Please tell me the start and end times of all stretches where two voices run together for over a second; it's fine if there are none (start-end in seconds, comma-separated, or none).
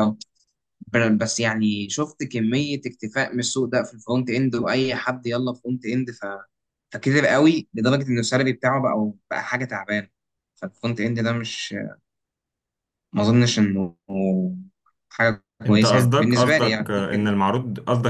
15.7-17.3